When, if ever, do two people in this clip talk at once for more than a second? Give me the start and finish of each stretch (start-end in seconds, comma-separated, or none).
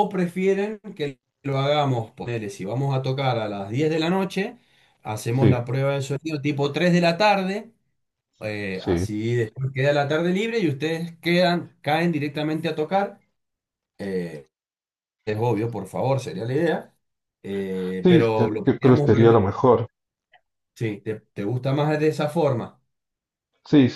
18.0-19.6